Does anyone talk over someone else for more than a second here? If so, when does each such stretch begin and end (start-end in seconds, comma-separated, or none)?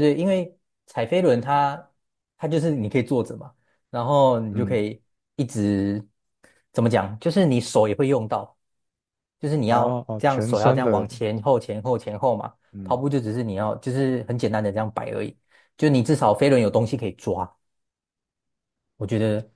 9.7-11.1